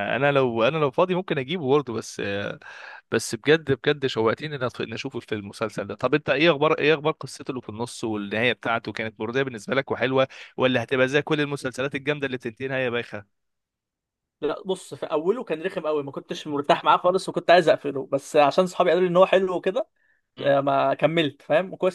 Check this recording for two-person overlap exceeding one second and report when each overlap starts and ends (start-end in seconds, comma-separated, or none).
none